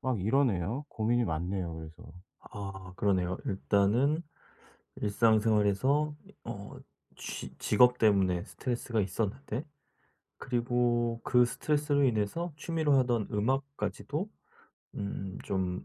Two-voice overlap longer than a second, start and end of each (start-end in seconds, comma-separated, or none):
none